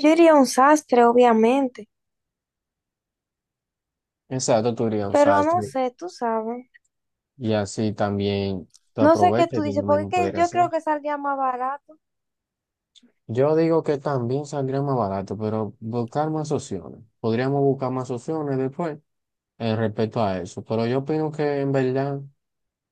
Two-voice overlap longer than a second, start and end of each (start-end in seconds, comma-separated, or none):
9.0-10.7